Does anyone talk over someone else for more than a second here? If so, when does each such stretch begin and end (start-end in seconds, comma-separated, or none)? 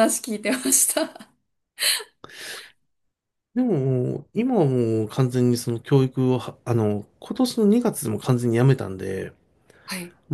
none